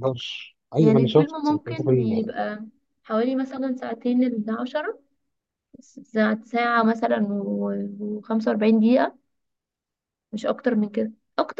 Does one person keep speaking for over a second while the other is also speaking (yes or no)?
yes